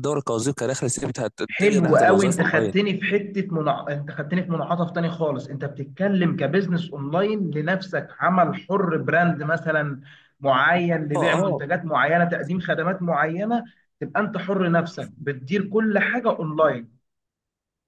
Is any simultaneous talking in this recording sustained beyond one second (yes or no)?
yes